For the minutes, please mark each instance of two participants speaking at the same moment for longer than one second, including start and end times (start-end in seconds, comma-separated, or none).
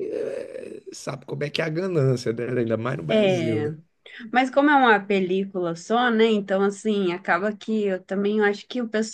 none